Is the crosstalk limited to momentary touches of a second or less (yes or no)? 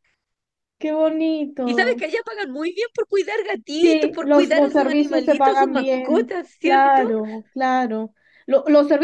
no